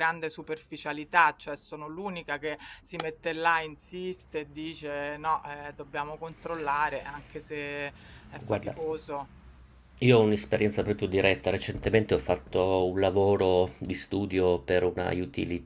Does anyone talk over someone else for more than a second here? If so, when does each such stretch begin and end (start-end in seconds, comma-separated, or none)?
none